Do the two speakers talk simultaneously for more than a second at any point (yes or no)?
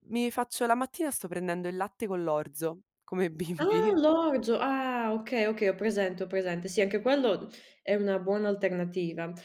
no